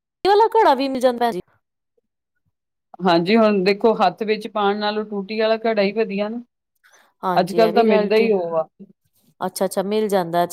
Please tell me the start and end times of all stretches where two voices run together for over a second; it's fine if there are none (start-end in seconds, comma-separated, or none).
none